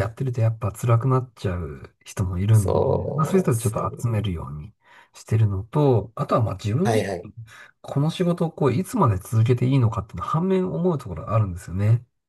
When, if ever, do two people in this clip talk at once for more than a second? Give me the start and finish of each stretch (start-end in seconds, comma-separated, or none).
2.5-4.0